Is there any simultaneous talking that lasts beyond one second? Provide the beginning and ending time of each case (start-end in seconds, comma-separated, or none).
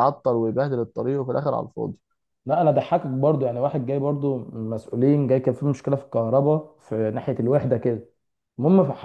none